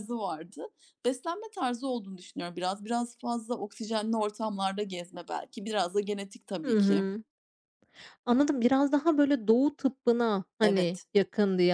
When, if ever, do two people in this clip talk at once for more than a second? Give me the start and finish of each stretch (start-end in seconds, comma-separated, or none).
none